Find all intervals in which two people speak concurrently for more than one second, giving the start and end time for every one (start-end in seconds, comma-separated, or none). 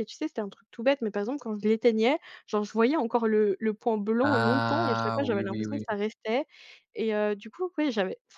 4.2-5.8